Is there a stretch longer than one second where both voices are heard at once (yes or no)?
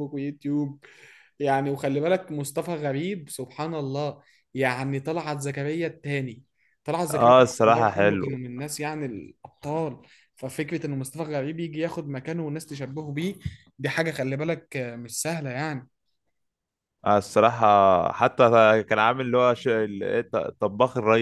yes